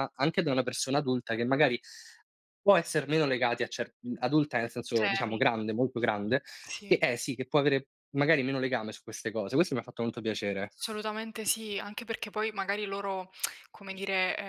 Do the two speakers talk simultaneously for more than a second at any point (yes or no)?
no